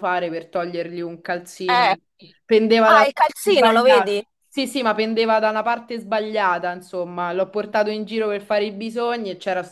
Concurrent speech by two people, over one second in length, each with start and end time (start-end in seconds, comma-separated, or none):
2.9-4.3